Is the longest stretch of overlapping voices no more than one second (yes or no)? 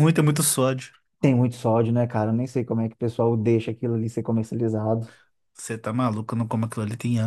yes